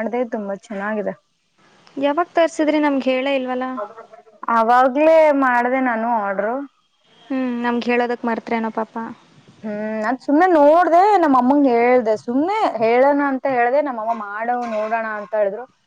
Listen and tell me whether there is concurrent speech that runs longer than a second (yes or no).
no